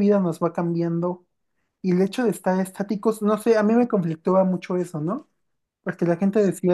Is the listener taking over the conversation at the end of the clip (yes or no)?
no